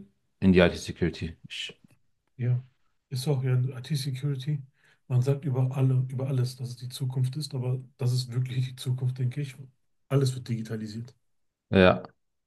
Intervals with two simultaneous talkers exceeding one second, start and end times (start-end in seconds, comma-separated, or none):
none